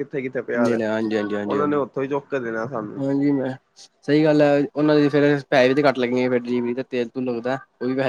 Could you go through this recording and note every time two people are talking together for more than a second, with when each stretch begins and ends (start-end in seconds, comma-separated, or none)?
none